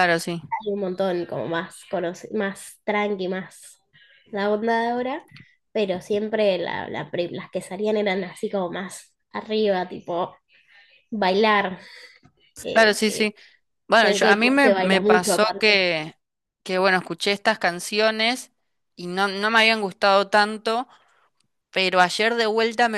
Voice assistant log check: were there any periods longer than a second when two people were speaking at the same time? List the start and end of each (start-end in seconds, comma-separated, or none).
14.0-15.8